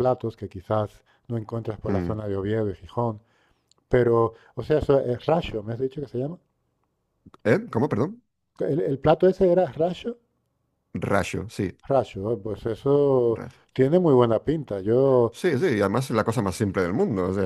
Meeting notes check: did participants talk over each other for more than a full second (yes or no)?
no